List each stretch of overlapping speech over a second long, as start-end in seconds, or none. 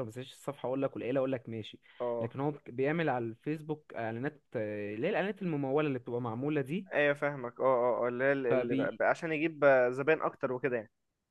none